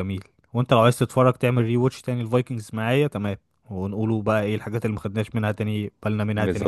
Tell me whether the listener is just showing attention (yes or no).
no